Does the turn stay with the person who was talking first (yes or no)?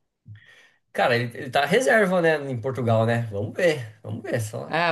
no